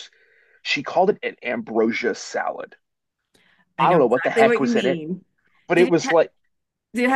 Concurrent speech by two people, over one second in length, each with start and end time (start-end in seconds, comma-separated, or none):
3.8-5.0